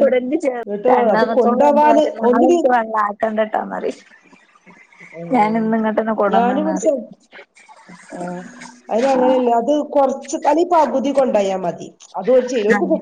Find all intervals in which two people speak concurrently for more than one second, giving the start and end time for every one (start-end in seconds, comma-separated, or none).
0.6-2.6